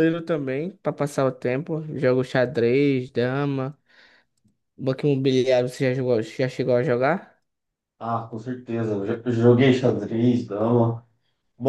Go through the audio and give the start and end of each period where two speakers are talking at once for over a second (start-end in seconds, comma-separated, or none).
none